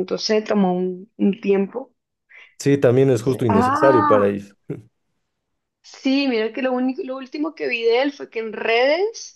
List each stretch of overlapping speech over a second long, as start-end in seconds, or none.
3.1-4.4